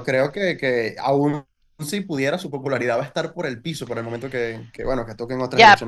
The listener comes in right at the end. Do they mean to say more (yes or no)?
yes